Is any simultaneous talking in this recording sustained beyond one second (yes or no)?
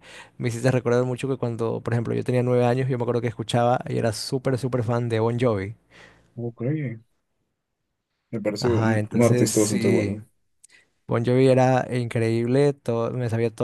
yes